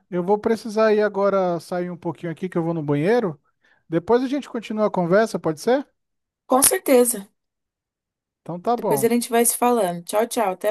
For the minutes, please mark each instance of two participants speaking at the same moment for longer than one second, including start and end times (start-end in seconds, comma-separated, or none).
none